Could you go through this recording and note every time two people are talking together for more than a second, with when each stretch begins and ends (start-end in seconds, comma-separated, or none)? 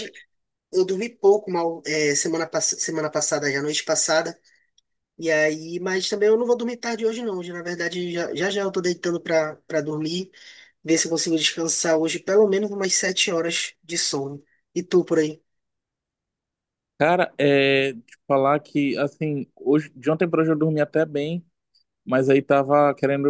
none